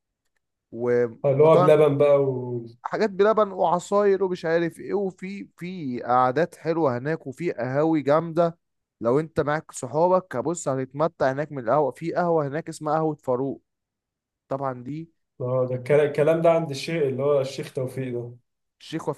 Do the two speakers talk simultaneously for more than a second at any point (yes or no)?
no